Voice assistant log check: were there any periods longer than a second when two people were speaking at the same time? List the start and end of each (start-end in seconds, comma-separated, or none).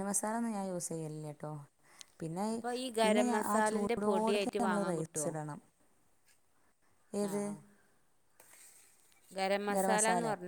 3.0-5.3